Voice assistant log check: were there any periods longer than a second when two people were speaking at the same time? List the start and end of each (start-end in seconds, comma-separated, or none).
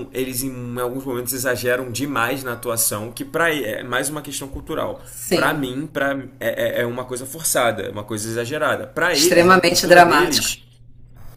9.1-10.5